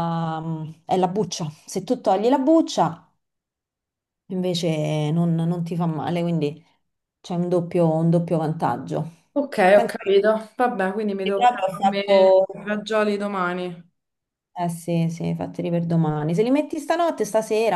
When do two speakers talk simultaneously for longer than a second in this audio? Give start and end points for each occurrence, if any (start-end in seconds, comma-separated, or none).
11.3-12.7